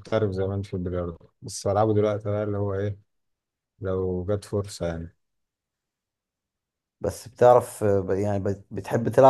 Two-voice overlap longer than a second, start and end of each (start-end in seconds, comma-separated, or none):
none